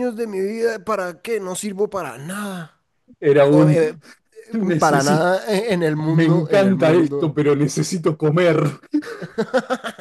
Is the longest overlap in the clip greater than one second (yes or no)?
yes